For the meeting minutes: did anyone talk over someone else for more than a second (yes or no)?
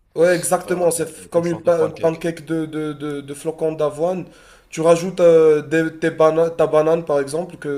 yes